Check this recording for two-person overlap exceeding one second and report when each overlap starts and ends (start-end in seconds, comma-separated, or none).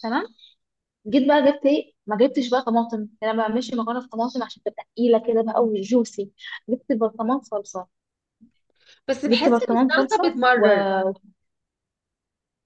9.3-10.8